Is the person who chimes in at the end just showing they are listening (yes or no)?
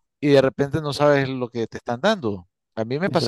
yes